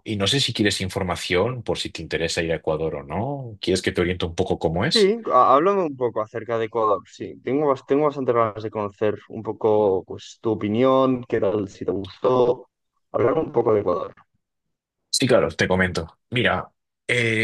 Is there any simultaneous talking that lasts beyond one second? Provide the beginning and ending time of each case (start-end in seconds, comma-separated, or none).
none